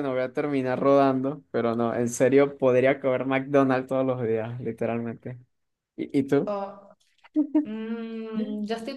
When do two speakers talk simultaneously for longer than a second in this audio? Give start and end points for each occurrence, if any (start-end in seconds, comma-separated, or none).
none